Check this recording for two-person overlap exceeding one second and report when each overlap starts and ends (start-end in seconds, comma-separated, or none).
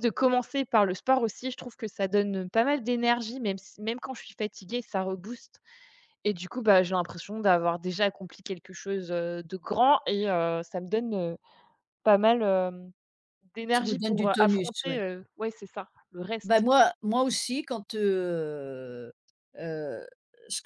13.7-15.0